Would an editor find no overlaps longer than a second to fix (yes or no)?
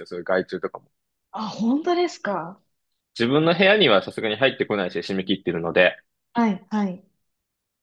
yes